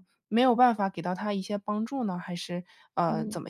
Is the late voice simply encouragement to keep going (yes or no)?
no